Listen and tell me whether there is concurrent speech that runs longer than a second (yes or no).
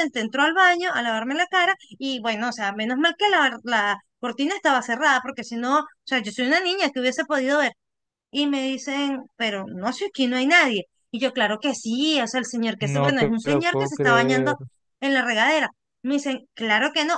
yes